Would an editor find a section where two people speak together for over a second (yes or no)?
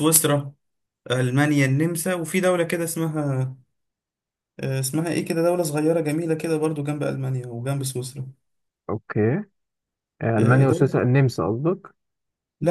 no